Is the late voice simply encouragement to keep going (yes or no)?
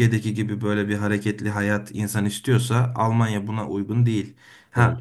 yes